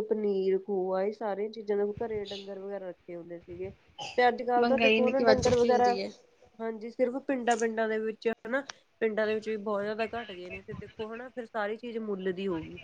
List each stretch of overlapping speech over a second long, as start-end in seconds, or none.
4.6-6.0